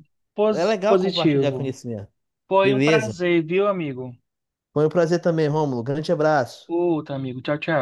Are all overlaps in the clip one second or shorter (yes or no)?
no